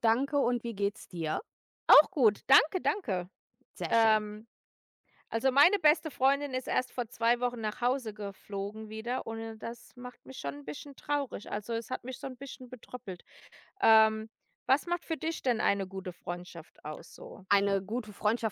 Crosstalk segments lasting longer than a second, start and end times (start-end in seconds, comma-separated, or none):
none